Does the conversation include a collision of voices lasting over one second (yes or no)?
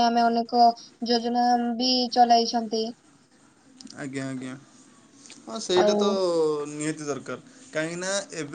no